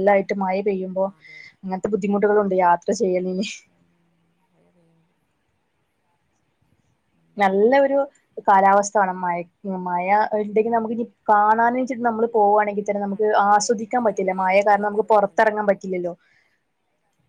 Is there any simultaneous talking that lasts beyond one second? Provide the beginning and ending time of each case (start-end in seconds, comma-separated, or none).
13.1-15.5